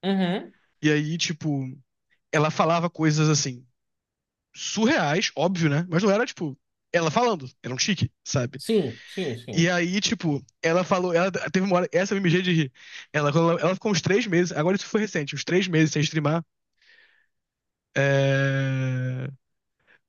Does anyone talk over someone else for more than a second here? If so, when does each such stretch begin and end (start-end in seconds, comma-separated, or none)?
none